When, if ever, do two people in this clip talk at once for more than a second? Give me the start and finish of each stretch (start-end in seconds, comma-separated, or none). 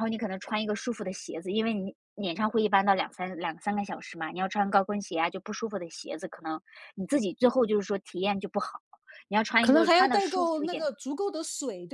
9.6-10.9